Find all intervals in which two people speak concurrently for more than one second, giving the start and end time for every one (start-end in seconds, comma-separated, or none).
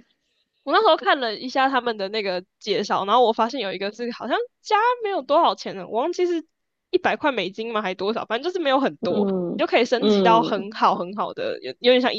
9.0-10.7